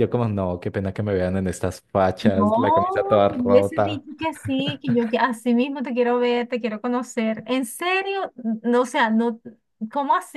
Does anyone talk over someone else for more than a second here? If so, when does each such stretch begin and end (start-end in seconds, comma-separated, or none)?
2.2-4.0